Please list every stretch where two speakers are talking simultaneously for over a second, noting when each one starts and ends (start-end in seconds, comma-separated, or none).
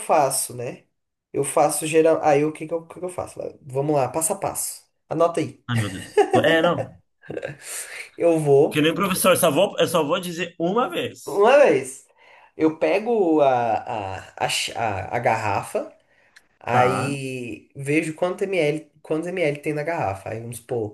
none